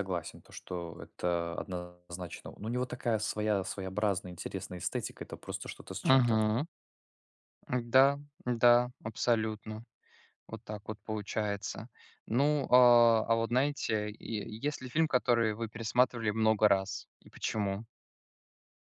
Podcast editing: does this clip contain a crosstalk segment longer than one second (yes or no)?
no